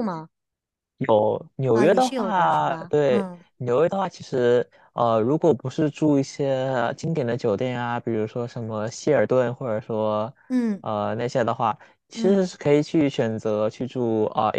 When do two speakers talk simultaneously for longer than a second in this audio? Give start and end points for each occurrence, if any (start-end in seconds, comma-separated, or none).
1.7-3.5